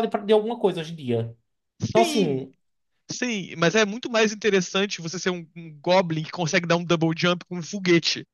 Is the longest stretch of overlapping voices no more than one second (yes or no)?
yes